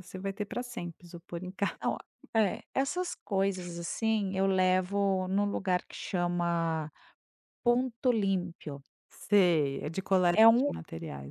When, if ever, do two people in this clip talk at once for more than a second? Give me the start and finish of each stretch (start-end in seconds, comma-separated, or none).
none